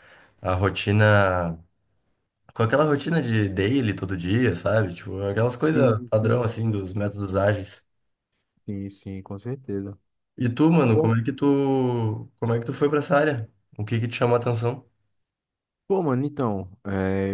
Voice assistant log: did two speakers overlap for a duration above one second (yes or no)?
yes